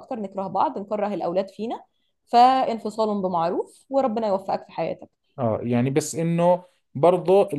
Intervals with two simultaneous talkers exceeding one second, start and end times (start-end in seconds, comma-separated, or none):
none